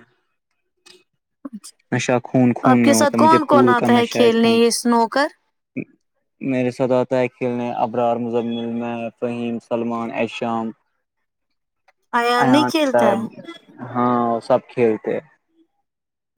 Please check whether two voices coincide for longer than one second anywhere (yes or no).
yes